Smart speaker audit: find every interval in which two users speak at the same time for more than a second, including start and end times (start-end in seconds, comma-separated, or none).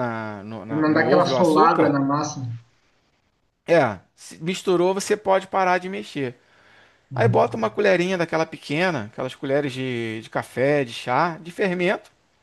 0.6-2.0